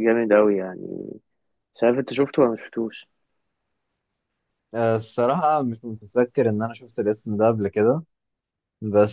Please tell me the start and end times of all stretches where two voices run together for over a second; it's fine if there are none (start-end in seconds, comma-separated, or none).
none